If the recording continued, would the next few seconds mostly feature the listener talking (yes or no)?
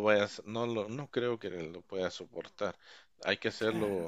no